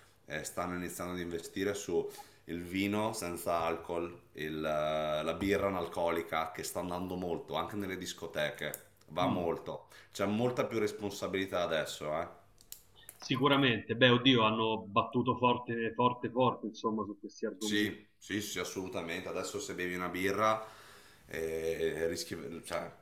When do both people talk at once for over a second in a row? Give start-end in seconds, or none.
none